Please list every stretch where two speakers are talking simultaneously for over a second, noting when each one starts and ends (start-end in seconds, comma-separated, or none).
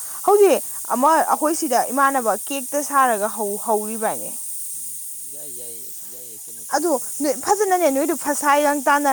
6.7-8.2